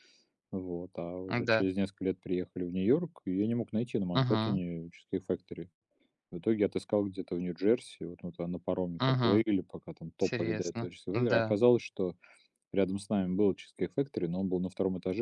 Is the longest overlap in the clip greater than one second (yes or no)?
yes